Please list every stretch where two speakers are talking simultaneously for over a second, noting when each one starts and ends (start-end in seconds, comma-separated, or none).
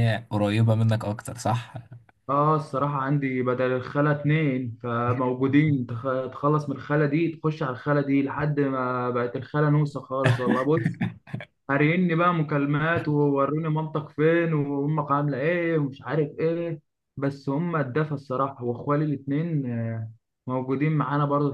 none